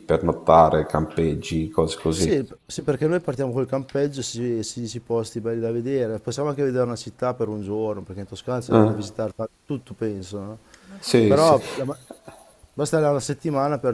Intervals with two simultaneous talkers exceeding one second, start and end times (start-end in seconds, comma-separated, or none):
none